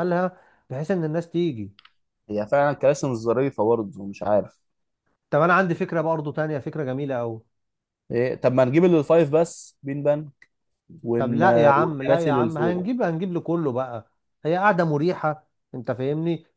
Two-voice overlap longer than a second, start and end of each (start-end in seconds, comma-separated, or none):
11.2-12.9